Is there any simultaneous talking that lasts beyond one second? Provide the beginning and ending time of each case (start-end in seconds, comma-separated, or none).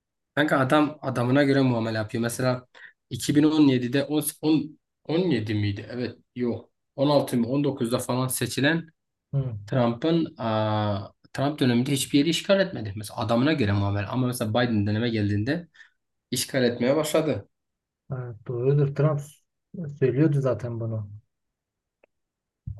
none